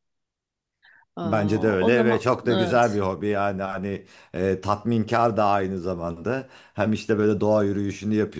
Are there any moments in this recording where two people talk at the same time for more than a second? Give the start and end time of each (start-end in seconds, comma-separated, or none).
1.2-2.9